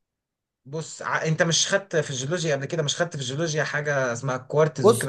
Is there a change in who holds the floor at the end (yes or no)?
yes